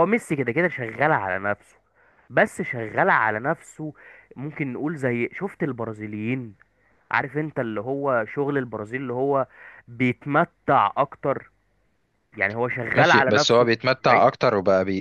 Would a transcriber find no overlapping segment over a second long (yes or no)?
no